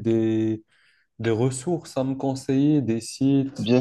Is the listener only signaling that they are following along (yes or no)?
no